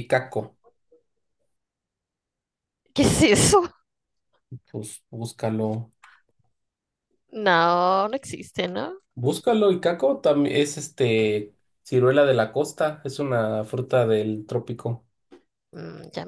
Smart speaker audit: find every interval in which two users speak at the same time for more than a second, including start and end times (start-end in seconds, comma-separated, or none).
none